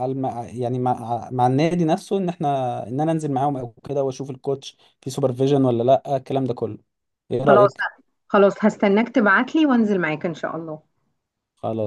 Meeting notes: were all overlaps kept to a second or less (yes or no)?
yes